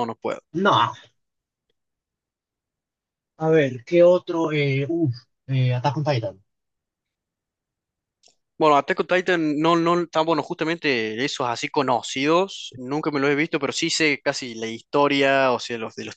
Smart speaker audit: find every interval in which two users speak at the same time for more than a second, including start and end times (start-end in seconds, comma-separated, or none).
none